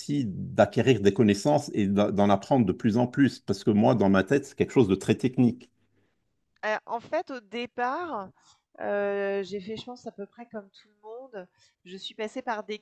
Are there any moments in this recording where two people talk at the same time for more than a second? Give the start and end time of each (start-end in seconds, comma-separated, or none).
none